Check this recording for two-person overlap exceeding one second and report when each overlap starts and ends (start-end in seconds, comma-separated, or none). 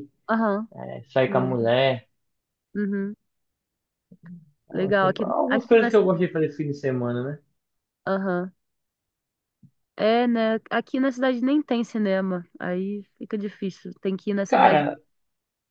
4.7-6.2